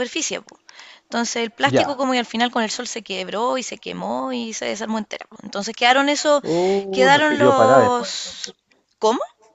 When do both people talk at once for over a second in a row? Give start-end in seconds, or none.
6.9-8.5